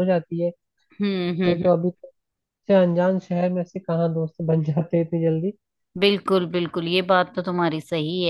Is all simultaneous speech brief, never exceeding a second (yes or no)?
yes